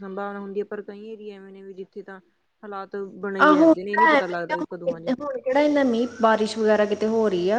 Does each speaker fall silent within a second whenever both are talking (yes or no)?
no